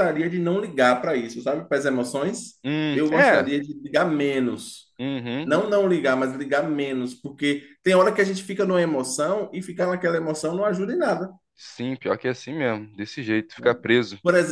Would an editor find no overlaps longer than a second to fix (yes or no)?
yes